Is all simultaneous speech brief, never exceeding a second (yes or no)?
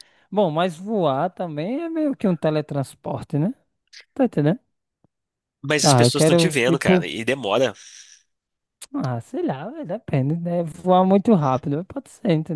no